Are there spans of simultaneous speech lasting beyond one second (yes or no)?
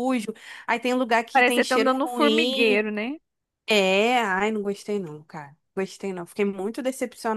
yes